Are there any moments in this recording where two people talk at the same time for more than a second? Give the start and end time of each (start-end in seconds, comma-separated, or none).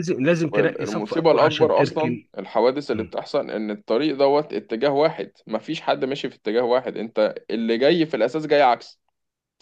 0.5-2.3